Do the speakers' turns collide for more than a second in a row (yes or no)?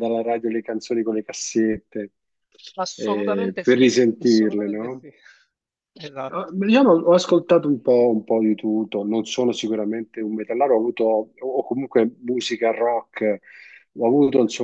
yes